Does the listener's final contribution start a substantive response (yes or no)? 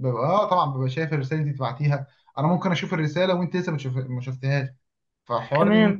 no